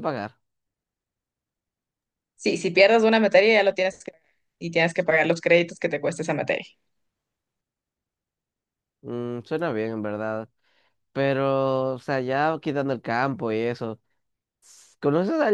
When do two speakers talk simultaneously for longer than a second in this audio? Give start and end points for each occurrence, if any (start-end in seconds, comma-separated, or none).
none